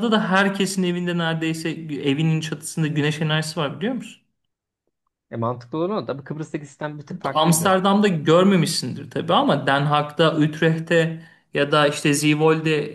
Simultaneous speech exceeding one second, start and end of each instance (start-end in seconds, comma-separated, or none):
none